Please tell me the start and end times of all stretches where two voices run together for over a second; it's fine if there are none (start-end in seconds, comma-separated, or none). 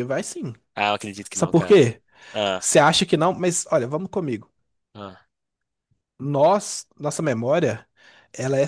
none